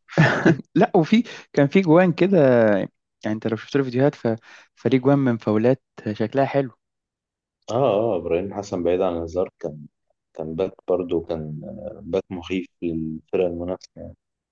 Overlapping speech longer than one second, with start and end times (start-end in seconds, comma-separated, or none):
none